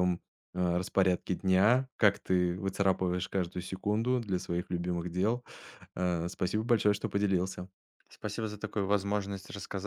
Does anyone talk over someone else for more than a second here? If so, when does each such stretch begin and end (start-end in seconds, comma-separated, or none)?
none